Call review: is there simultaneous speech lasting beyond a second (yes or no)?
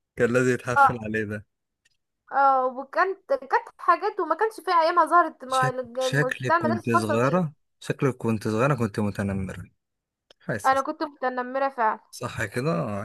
yes